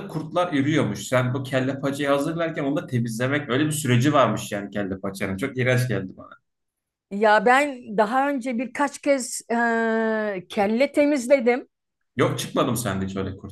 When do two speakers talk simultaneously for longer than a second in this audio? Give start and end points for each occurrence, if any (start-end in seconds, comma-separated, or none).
none